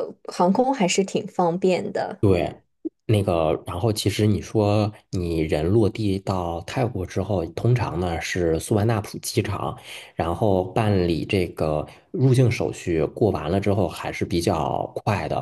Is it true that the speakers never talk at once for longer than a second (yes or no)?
yes